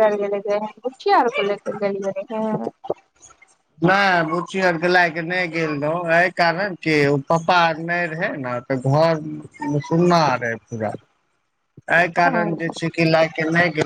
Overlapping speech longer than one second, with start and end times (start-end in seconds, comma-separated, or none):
none